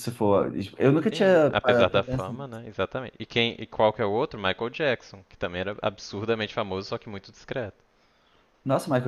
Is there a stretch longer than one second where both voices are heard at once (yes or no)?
yes